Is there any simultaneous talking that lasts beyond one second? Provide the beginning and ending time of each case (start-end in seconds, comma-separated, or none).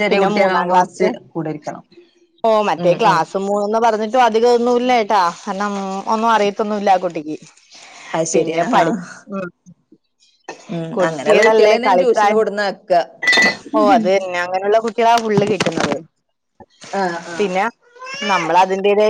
10.9-12.4